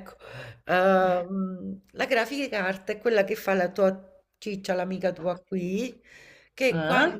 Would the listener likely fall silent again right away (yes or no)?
yes